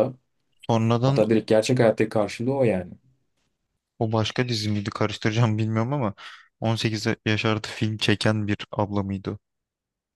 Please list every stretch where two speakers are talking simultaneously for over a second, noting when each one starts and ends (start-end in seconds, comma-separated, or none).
none